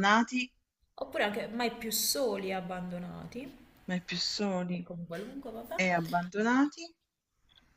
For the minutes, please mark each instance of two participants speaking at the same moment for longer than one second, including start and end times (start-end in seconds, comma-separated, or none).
none